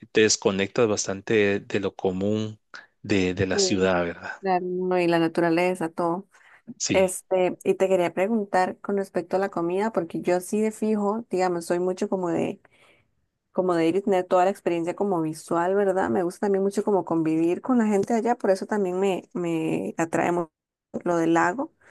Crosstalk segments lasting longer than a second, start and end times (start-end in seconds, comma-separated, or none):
none